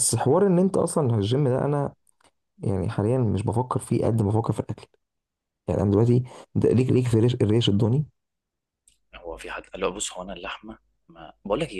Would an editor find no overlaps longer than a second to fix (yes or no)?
yes